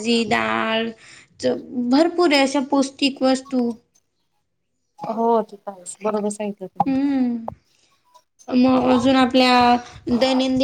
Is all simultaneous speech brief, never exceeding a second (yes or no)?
yes